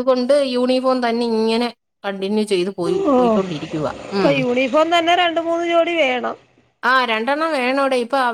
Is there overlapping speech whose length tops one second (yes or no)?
no